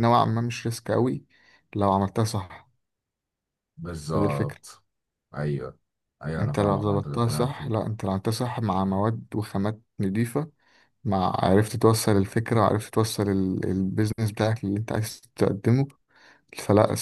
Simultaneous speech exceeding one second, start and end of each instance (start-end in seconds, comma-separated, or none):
6.4-7.7